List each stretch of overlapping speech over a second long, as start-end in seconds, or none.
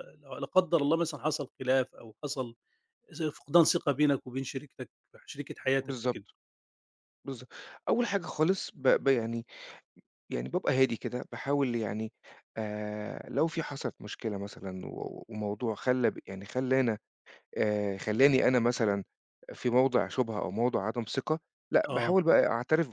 none